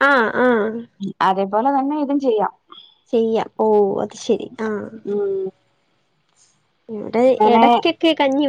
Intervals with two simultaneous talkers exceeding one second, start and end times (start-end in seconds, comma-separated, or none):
none